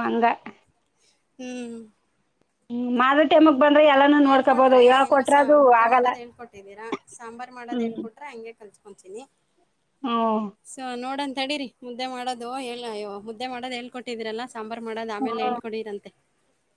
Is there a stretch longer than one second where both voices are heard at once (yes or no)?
yes